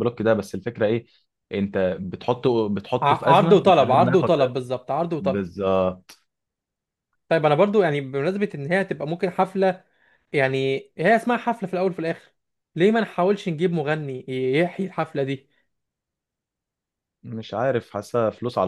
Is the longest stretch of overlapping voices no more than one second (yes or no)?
no